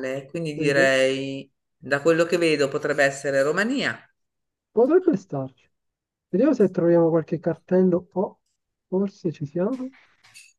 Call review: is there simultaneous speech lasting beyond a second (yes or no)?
no